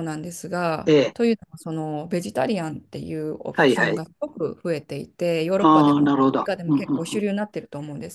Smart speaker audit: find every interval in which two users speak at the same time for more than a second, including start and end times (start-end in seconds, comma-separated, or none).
5.6-7.3